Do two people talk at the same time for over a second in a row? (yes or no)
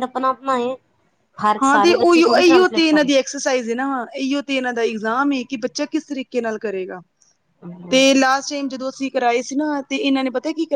yes